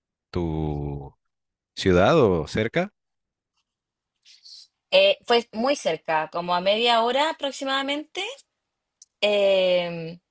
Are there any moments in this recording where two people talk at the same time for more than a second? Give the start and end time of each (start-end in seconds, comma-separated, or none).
none